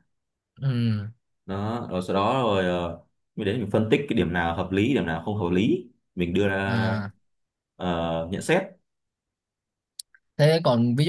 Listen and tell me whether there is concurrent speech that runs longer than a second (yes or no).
no